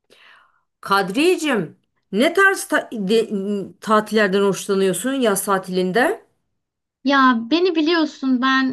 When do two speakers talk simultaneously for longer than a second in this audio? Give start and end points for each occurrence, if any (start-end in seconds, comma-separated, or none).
none